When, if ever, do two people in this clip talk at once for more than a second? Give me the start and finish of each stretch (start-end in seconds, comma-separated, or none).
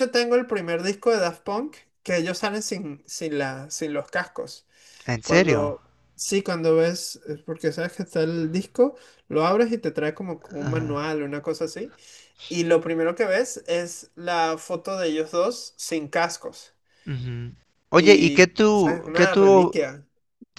17.9-19.8